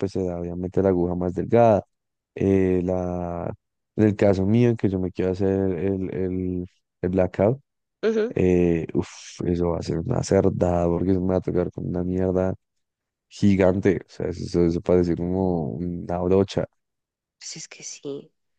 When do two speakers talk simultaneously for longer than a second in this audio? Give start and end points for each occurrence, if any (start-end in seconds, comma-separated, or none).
none